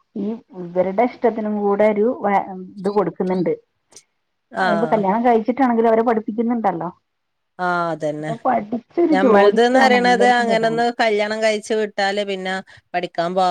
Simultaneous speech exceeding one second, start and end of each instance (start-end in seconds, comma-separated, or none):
9.1-10.9